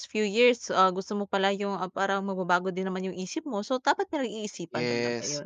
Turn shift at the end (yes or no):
yes